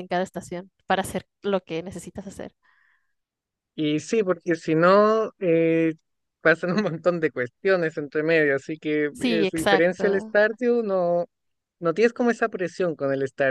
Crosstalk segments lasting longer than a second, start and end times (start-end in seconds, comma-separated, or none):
9.1-10.3